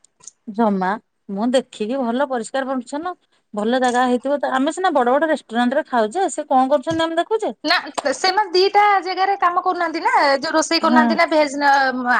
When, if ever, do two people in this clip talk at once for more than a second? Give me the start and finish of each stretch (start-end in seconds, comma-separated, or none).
none